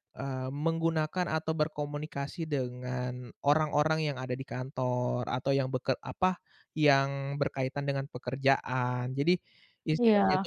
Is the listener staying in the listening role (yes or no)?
yes